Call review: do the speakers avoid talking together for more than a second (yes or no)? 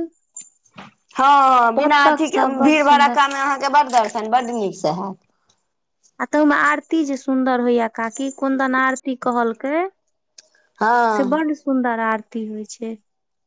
no